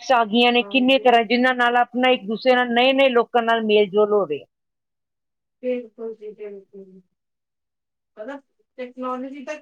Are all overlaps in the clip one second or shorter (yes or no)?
yes